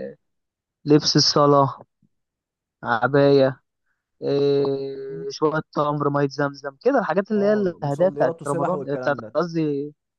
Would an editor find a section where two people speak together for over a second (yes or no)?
yes